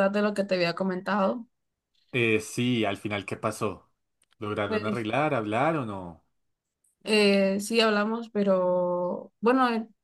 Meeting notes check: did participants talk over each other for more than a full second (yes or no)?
no